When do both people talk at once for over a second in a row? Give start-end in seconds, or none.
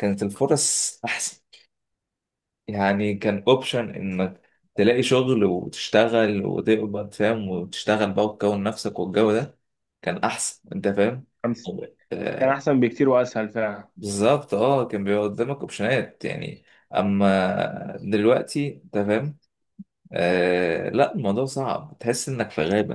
none